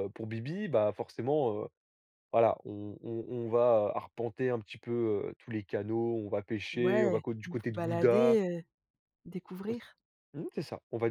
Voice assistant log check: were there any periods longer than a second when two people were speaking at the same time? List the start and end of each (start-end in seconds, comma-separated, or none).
6.7-8.4